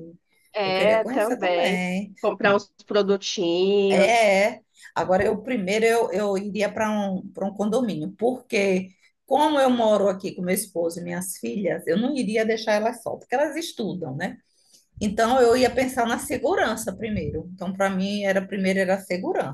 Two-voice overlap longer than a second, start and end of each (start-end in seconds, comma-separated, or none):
0.6-2.1